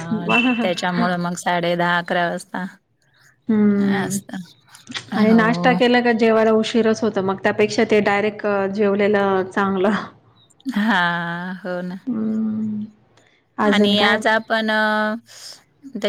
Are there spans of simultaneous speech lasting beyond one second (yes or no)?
no